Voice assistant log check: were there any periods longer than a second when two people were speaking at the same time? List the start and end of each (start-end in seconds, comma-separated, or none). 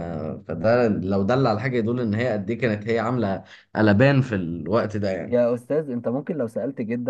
none